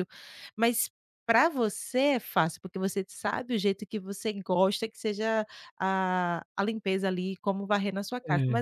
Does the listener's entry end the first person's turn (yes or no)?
no